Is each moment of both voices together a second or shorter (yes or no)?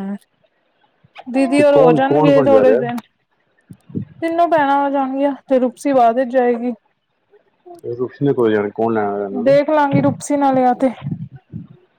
no